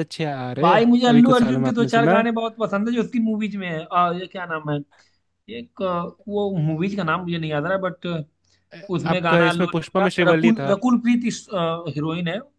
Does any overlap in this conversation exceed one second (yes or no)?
yes